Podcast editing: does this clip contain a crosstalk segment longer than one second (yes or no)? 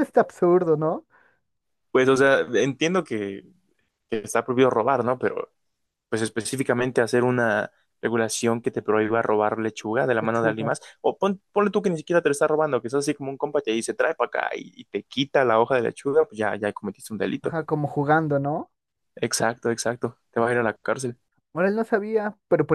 no